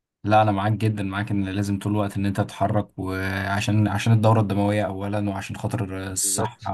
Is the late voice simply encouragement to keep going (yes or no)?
yes